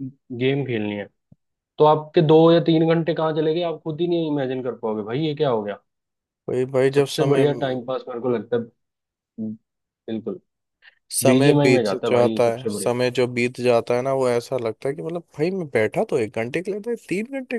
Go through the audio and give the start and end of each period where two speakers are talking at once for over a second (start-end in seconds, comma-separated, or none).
11.2-12.9